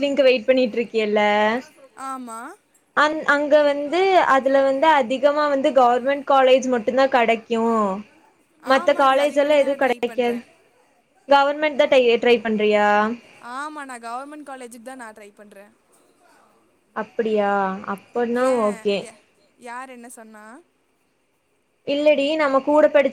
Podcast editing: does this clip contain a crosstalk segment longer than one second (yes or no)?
yes